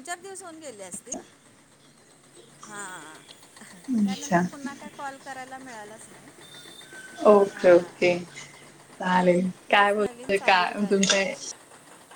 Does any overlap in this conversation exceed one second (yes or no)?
yes